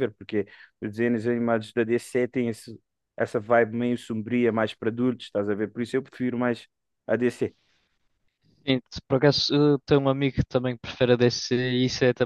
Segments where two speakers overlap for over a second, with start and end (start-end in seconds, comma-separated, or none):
none